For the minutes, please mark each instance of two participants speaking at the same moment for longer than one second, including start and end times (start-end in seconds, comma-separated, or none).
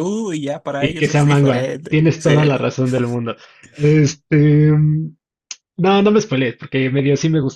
0.8-2.5